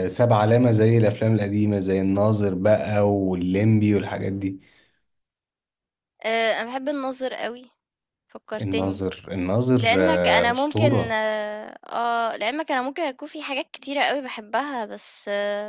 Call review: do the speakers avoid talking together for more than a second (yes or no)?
no